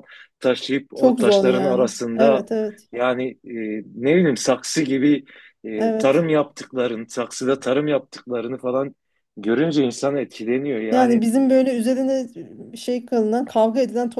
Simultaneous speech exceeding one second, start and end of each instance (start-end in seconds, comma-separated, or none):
0.9-2.5